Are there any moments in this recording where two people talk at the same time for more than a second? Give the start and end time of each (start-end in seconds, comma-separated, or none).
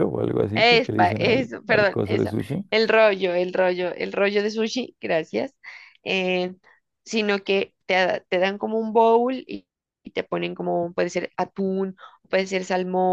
0.5-2.3